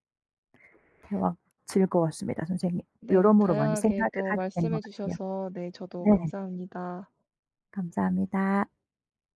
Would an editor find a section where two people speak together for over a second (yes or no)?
yes